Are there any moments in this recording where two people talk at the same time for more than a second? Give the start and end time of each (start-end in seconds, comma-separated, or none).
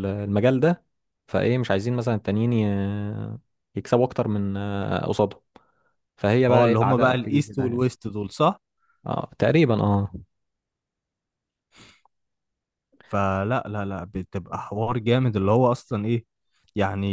6.5-7.8